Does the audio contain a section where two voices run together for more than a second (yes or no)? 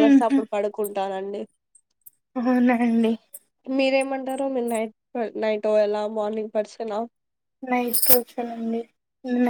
no